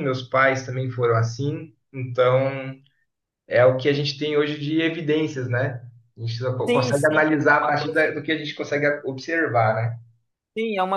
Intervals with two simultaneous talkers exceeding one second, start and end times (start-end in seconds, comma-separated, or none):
6.7-8.1